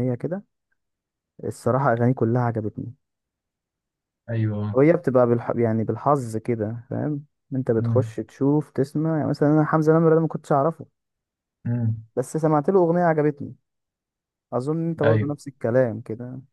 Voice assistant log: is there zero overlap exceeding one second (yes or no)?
yes